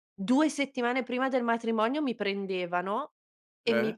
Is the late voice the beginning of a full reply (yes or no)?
no